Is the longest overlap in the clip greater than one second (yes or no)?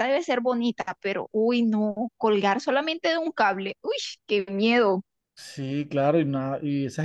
no